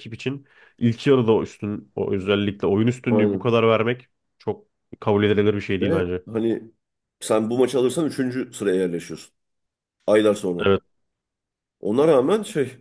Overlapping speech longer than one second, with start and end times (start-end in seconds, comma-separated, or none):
none